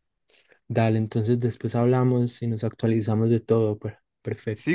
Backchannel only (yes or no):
no